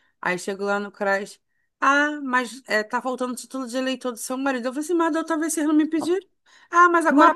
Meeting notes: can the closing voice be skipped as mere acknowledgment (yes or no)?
no